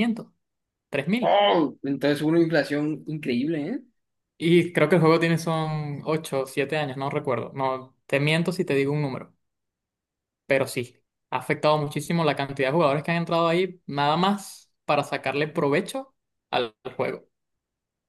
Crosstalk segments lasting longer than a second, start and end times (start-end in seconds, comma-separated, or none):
none